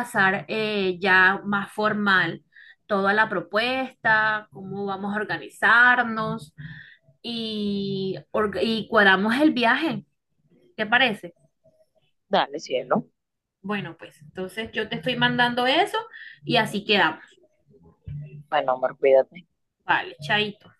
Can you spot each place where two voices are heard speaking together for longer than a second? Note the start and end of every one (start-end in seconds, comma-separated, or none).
none